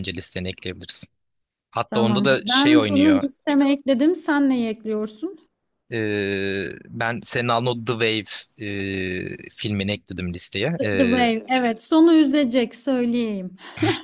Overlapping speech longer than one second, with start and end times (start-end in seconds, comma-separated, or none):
1.9-3.2